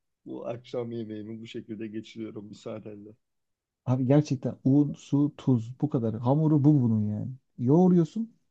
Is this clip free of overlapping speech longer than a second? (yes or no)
yes